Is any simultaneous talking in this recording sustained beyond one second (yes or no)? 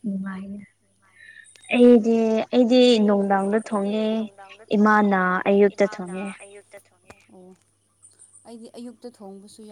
no